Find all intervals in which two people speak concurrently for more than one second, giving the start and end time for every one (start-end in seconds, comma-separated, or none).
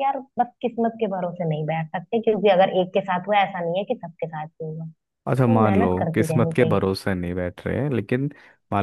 5.3-6.9